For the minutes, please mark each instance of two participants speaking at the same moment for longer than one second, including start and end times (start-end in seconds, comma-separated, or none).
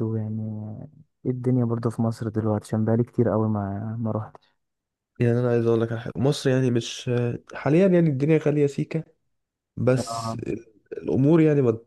none